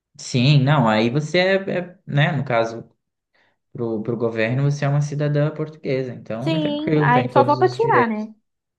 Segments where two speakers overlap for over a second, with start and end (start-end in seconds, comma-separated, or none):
6.4-8.3